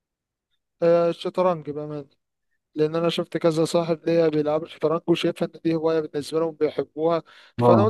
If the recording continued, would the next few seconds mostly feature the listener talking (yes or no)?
no